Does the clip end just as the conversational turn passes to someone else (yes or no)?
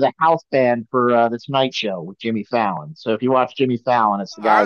yes